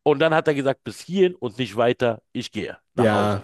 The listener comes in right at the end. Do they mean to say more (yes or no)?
yes